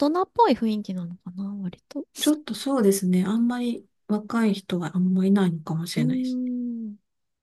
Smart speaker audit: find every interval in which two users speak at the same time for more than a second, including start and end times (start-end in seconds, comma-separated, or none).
none